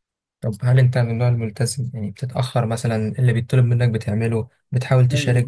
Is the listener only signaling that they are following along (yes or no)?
no